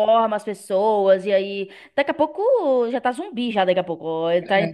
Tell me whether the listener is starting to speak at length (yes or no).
no